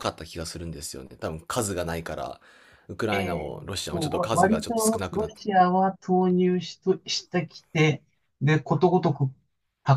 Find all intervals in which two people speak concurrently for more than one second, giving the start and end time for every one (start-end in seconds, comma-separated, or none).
3.1-5.3